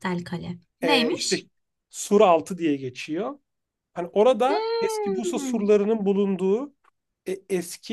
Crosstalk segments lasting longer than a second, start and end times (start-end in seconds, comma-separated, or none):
4.5-5.7